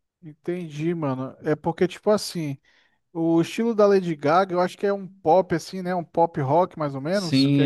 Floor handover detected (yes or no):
yes